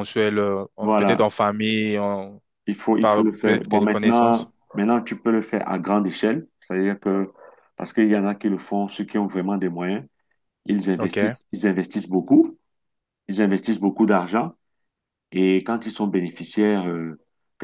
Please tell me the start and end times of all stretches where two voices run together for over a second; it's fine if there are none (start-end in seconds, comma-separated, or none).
3.0-4.5